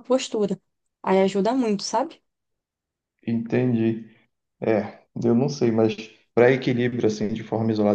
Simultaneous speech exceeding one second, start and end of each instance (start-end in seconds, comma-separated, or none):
none